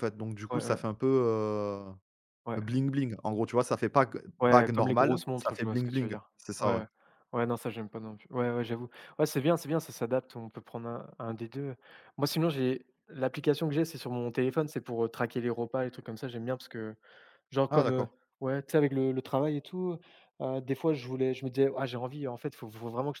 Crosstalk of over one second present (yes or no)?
yes